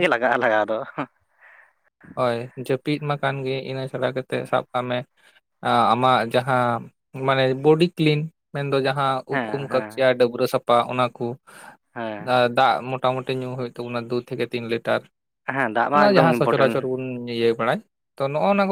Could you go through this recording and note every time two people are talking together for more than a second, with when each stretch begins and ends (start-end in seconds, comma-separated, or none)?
15.5-16.9